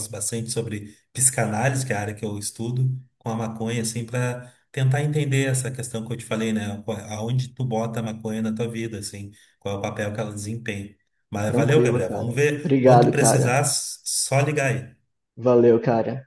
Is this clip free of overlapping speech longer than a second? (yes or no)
no